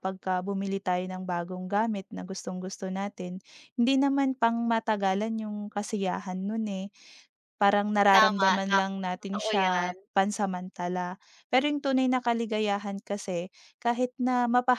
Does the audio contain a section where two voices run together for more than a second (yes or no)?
yes